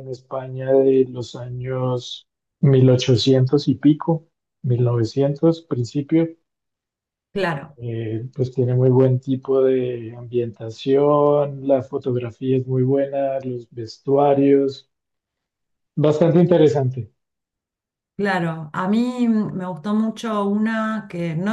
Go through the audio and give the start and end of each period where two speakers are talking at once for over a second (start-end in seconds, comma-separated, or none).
none